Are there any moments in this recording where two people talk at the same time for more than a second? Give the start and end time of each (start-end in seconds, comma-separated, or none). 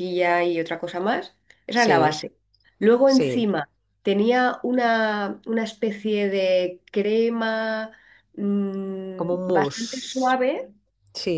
9.2-10.4